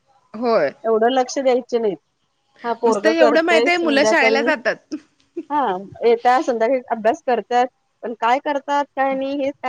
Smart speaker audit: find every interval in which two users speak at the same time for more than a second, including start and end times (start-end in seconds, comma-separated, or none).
2.9-4.5